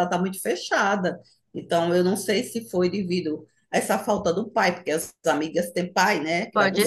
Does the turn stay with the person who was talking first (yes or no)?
no